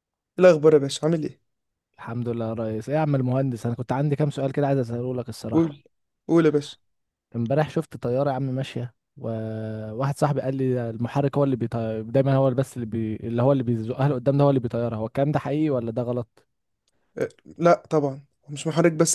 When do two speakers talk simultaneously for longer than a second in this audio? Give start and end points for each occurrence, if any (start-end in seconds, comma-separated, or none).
none